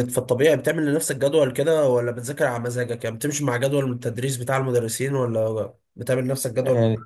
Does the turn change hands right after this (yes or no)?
yes